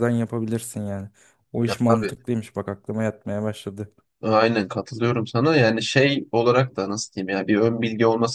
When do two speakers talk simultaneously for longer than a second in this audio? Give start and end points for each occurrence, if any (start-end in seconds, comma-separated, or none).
none